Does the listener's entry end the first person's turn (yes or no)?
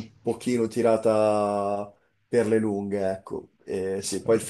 no